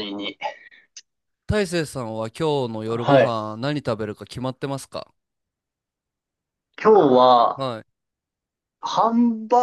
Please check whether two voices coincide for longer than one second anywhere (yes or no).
no